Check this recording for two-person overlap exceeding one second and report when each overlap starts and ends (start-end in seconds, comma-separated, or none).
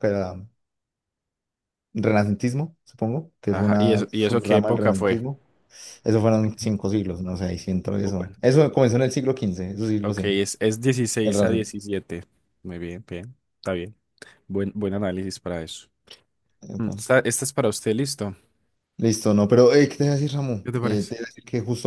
3.5-5.2